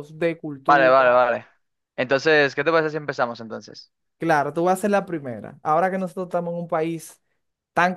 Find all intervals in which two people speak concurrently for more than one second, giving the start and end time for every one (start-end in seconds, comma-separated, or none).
none